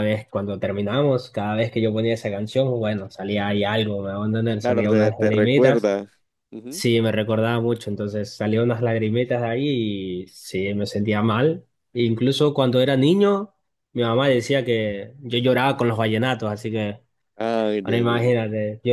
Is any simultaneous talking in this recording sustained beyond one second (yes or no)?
yes